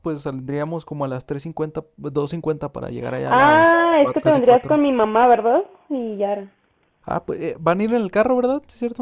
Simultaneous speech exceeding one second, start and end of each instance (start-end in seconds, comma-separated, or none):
3.3-4.8